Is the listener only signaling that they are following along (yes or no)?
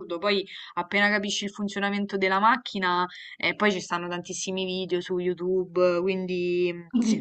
yes